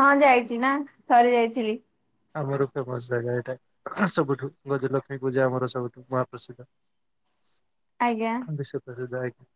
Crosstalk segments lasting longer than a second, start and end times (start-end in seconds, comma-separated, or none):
none